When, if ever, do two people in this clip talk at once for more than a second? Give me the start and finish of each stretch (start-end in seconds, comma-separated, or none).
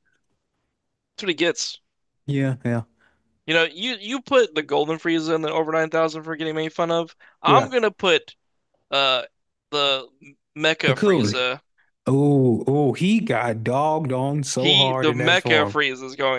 14.6-15.8